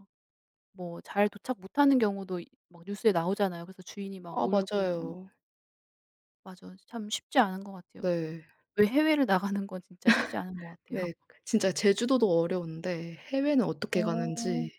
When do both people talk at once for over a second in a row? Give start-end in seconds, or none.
none